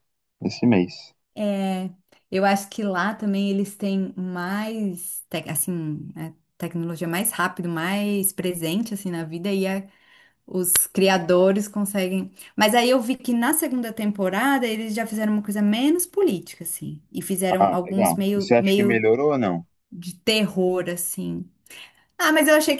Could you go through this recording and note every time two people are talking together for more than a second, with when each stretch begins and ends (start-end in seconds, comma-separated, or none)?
17.6-19.1